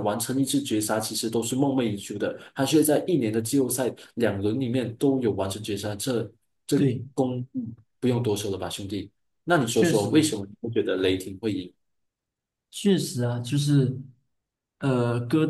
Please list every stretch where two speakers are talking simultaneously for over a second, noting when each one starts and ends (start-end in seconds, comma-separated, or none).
none